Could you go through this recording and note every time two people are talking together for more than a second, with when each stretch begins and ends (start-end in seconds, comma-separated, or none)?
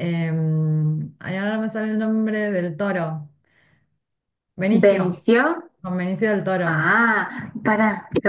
none